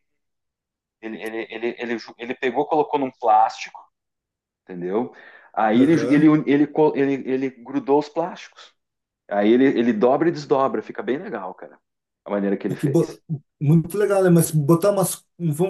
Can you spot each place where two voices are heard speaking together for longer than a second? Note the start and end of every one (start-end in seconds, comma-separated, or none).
none